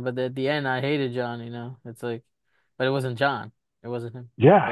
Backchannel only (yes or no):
yes